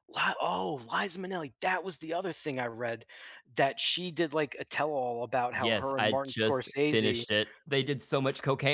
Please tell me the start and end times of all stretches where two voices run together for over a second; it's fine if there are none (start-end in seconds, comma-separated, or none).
5.5-7.2